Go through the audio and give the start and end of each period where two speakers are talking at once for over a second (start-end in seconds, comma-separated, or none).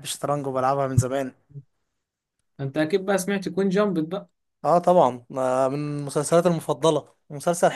none